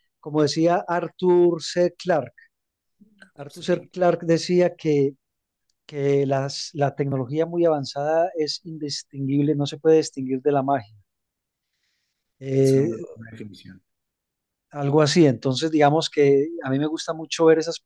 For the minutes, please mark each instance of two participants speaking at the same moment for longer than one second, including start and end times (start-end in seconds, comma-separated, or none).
none